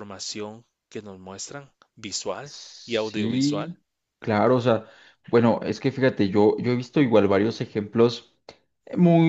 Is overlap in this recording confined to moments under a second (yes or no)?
no